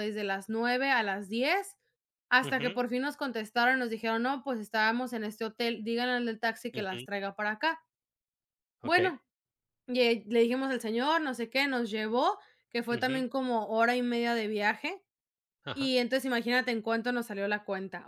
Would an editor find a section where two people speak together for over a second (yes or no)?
no